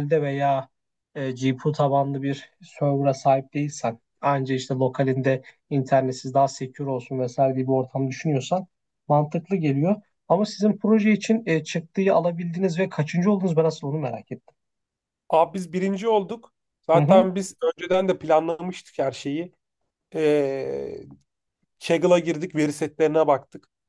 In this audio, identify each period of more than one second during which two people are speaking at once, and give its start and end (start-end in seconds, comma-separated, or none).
none